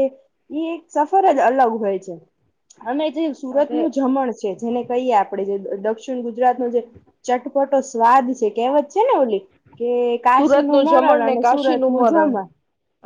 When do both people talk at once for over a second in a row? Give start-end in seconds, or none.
10.4-12.4